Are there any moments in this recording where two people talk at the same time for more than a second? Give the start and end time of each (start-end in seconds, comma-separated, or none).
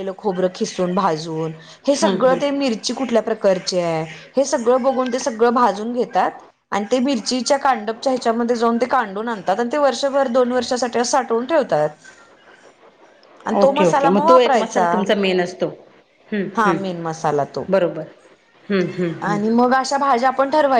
13.6-14.9